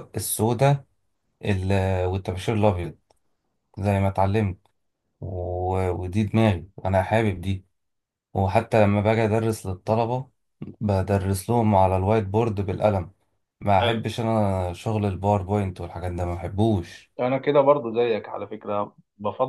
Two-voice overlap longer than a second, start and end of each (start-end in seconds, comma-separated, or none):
none